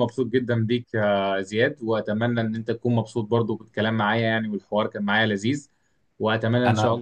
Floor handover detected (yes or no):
no